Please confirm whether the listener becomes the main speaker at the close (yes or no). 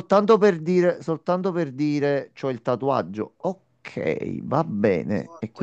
yes